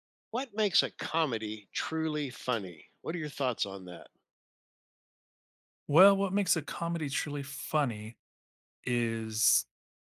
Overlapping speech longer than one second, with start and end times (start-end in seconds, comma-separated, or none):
none